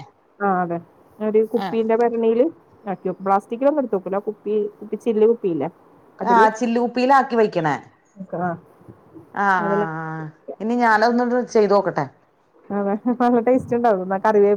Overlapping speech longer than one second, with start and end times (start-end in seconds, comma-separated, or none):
none